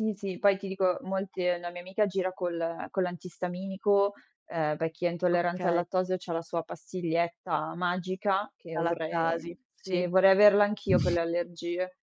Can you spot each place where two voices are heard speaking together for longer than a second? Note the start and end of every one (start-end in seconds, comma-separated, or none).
8.7-10.1